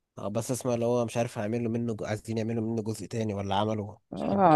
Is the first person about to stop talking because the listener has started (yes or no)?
yes